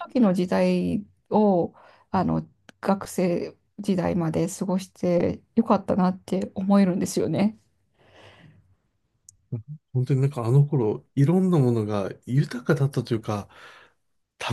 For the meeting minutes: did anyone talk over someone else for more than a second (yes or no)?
no